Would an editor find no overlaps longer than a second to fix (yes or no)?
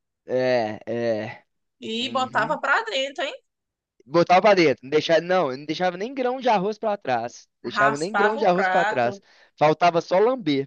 no